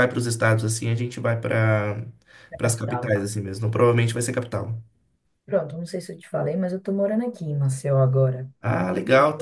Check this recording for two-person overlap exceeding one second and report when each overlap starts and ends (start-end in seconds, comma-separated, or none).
none